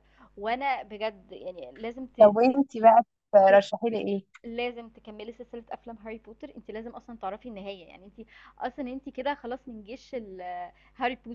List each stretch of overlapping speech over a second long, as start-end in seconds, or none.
none